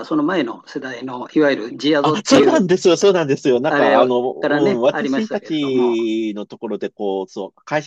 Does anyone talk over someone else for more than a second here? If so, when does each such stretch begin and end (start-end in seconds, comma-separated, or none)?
3.7-6.0